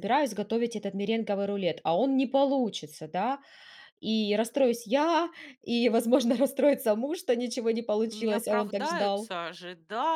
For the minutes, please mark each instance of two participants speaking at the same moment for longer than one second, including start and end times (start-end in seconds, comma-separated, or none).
8.1-9.3